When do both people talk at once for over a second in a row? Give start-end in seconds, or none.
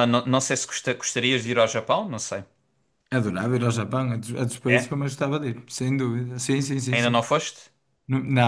none